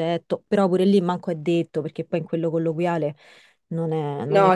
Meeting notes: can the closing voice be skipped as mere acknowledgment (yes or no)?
no